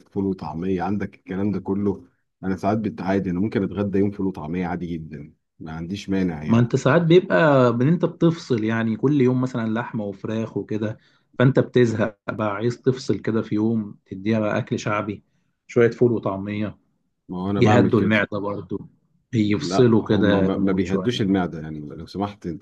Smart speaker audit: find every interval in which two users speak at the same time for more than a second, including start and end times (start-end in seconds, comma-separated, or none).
19.6-21.2